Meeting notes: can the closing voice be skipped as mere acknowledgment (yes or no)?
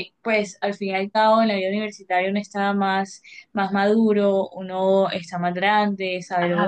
no